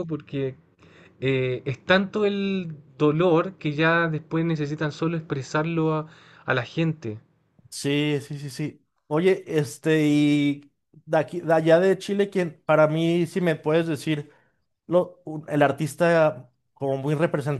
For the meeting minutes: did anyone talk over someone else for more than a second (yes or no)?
no